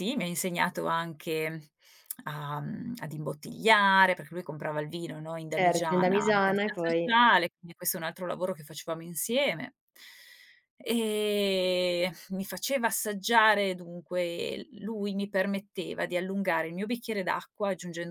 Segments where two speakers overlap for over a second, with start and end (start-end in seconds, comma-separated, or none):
5.5-7.1